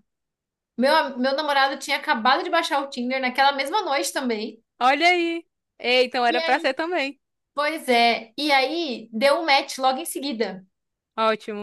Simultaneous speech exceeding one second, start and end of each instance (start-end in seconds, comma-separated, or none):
none